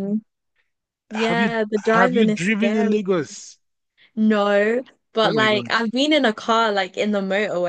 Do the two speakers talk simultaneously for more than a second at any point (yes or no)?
yes